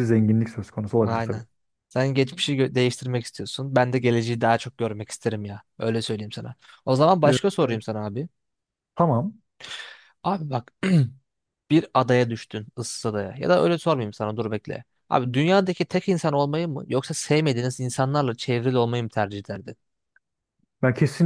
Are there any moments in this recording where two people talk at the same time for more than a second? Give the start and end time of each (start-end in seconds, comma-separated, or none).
none